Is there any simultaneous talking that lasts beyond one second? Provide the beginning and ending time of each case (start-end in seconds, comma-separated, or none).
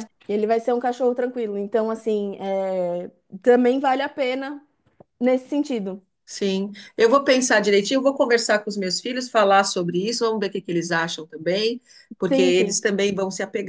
none